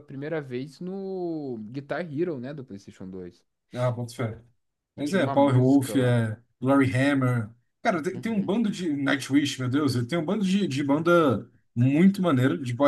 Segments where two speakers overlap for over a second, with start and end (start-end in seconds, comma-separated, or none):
5.0-6.2